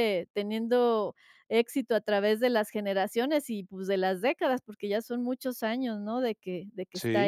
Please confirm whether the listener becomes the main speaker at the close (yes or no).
yes